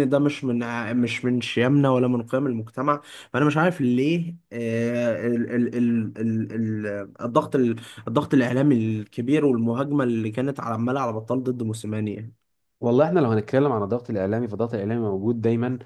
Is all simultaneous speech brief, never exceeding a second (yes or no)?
yes